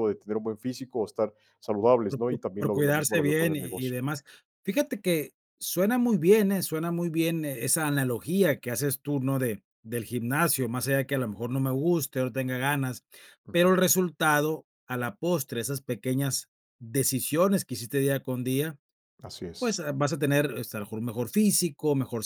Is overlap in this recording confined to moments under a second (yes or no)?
no